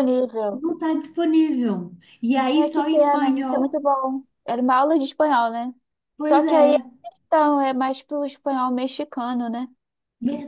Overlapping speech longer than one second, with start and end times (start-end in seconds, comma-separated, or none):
2.5-3.8